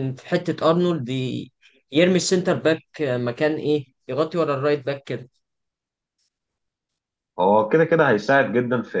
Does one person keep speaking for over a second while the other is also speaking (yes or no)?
no